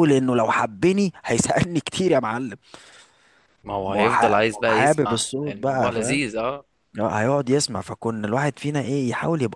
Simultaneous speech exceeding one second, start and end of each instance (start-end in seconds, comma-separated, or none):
3.9-6.2